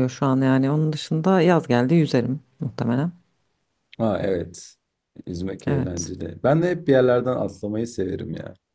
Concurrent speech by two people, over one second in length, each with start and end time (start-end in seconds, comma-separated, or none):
none